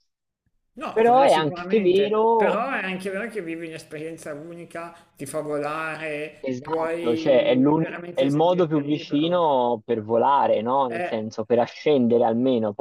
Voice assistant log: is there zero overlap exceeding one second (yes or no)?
no